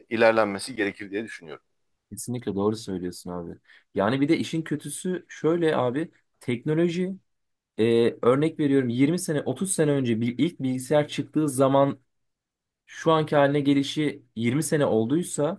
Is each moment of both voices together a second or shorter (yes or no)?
yes